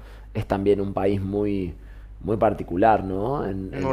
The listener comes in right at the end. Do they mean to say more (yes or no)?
no